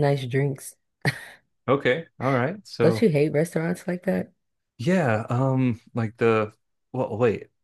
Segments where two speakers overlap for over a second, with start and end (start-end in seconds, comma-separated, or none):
none